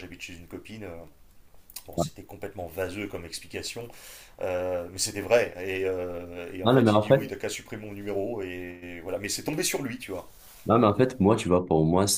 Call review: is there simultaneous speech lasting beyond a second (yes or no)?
no